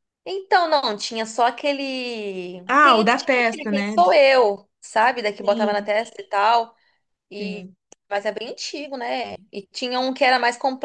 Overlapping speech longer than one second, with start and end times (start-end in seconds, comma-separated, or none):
2.7-3.9